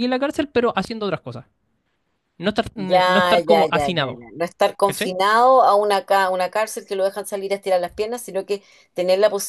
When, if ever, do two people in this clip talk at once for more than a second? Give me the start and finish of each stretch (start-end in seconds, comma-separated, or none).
2.8-4.2